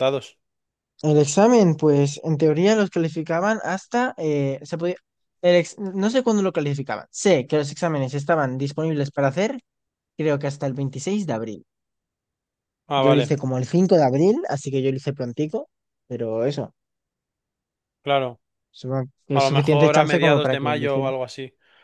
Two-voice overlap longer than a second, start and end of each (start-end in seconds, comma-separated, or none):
19.3-21.1